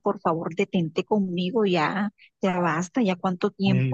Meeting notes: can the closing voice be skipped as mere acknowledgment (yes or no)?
no